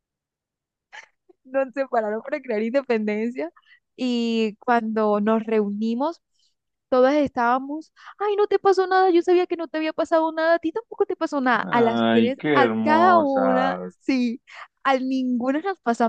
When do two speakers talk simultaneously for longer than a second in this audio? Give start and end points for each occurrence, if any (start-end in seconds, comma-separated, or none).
11.6-13.9